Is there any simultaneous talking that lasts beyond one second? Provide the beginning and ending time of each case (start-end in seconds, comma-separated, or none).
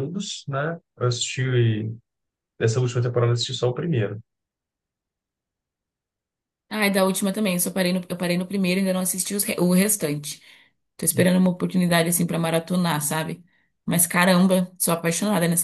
none